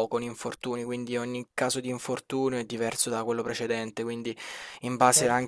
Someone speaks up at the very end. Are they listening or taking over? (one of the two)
listening